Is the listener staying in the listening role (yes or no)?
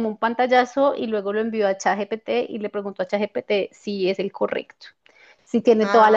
yes